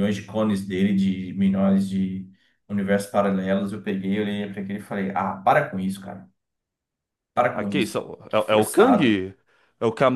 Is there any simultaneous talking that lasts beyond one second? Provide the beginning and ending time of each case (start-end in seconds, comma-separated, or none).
7.5-9.2